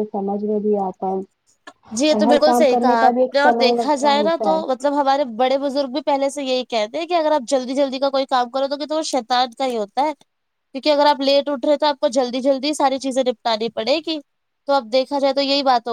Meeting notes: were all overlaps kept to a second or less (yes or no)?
no